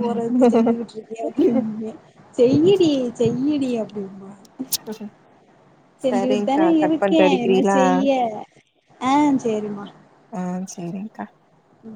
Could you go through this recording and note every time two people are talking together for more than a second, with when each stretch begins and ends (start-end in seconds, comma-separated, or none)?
6.1-7.8